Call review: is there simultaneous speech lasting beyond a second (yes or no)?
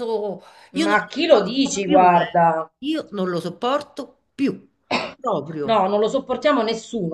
yes